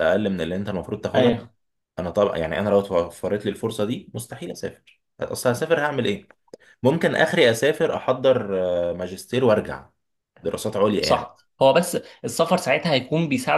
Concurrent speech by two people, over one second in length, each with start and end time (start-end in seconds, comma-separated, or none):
none